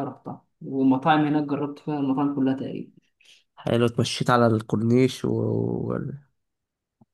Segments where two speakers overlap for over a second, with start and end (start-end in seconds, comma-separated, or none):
none